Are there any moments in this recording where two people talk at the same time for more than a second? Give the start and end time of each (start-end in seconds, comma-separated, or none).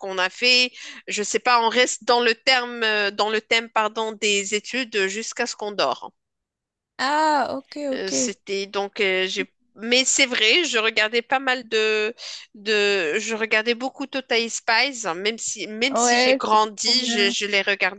15.9-17.4